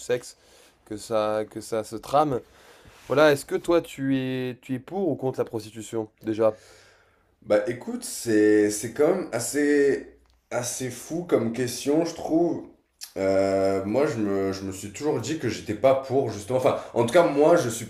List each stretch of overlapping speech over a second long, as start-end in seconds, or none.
none